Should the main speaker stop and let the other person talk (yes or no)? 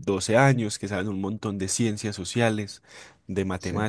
no